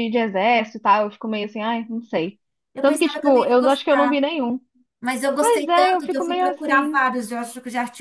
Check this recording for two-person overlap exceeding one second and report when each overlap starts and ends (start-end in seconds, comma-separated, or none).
2.8-4.2, 5.4-7.0